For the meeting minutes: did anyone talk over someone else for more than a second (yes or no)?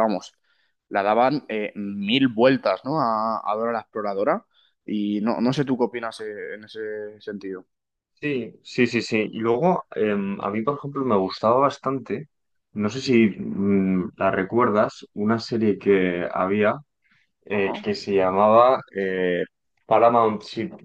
no